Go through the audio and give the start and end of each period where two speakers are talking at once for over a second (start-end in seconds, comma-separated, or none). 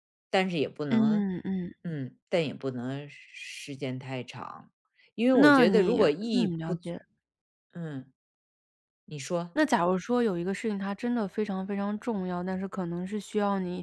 5.3-6.9